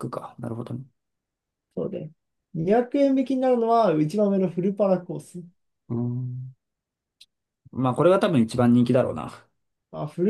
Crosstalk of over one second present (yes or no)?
no